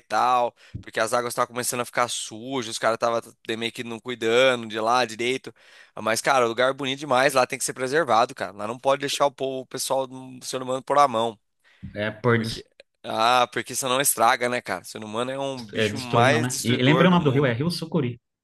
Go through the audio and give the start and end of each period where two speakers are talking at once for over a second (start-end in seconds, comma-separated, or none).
15.7-17.6